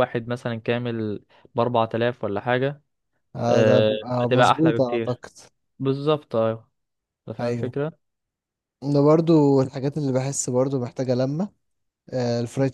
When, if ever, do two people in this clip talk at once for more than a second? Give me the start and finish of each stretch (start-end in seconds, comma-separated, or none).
3.5-5.2